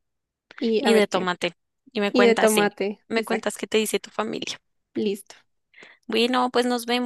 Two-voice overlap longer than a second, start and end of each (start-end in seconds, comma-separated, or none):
2.1-3.6